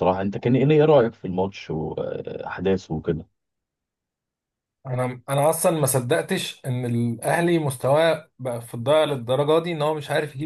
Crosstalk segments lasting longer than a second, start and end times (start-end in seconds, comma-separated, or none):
none